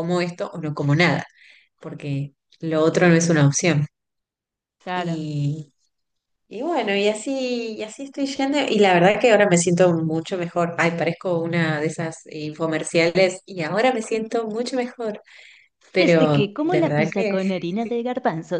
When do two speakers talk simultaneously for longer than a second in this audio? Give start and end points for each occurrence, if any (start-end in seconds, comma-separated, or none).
16.0-17.4